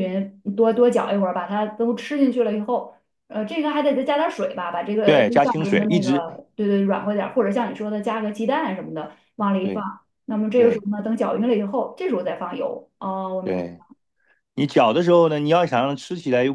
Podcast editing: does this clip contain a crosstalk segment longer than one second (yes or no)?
yes